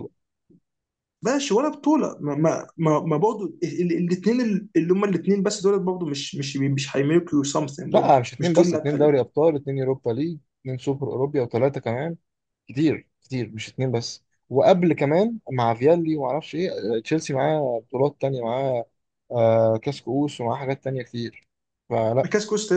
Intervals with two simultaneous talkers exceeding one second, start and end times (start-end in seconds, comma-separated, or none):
7.9-9.1